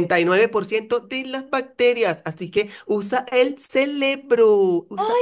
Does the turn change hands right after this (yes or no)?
yes